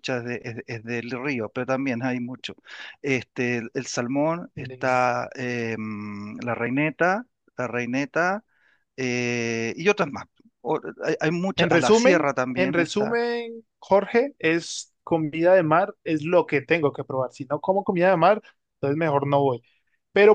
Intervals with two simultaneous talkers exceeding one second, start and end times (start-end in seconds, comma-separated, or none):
11.6-13.2